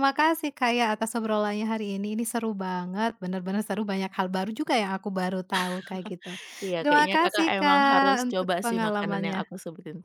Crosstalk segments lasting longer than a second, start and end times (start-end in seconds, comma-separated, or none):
6.8-9.5